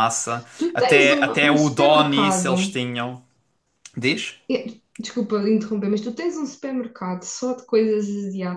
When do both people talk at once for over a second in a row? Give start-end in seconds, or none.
0.6-2.7